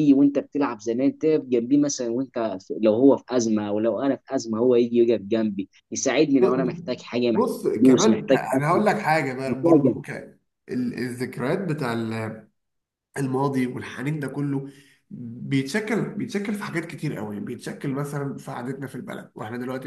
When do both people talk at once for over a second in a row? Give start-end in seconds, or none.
6.4-8.8